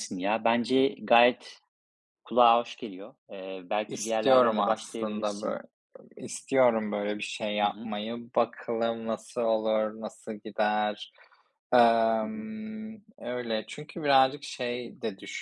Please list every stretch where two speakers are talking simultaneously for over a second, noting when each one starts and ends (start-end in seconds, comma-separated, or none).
3.9-5.6